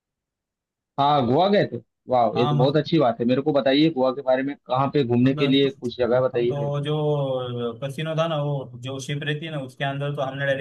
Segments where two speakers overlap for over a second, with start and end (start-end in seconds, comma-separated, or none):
none